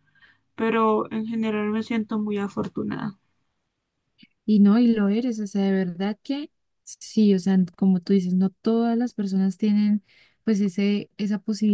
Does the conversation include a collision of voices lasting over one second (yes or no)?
no